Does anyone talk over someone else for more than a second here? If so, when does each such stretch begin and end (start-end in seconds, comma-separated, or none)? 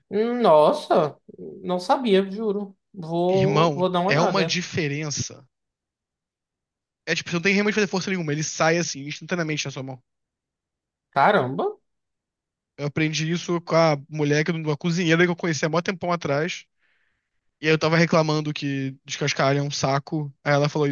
3.3-4.6